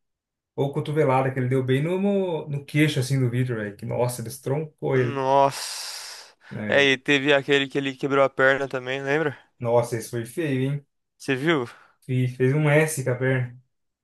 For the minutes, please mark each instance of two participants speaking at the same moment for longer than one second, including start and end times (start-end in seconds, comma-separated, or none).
none